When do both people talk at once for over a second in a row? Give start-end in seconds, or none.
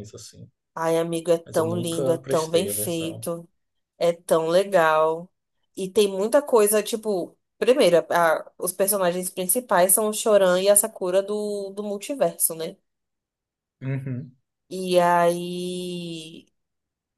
1.4-3.3